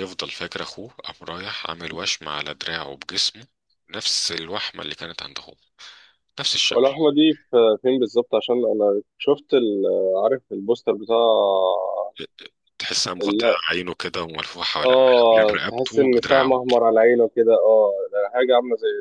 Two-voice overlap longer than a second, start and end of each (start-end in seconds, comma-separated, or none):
14.8-16.6